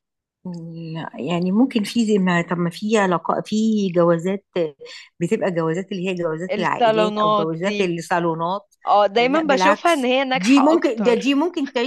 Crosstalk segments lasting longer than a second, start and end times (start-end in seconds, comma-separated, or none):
6.5-7.9, 9.3-11.3